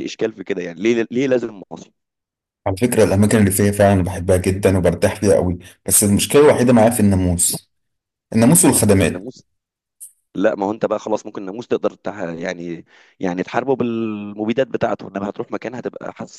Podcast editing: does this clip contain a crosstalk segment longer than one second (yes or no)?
no